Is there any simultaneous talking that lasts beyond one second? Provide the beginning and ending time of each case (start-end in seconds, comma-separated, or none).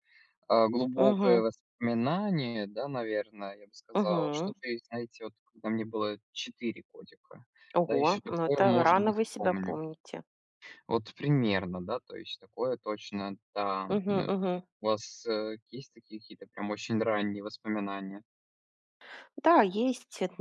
7.8-9.8